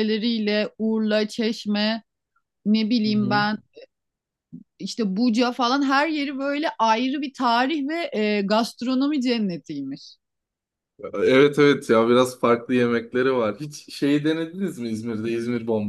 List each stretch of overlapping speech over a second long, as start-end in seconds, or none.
none